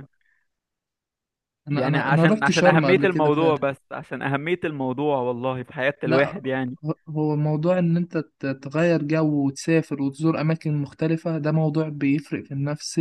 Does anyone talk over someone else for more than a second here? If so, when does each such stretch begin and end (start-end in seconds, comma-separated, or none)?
1.7-3.7